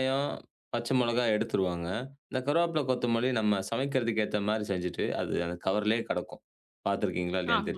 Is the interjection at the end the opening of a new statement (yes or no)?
yes